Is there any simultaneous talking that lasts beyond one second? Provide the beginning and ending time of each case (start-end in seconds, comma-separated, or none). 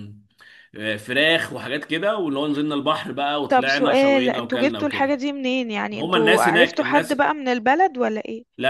3.5-5.1, 5.9-7.2